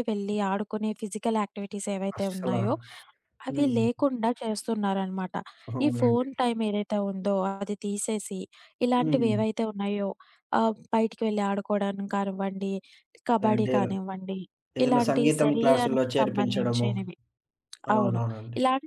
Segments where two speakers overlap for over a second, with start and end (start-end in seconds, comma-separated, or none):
14.8-16.9